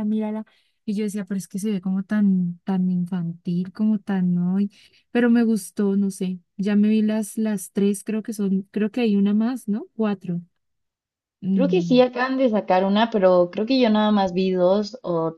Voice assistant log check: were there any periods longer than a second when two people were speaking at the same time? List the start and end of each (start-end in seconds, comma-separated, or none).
none